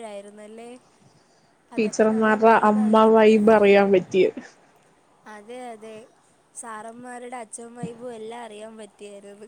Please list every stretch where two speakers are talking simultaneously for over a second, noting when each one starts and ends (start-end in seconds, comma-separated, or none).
none